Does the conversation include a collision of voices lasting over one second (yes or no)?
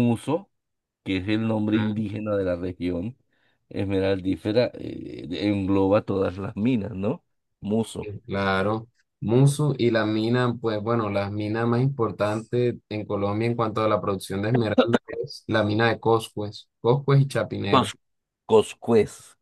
no